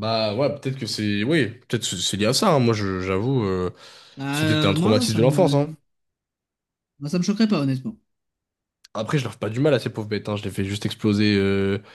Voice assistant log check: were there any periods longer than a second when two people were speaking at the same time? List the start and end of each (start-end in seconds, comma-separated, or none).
4.3-5.7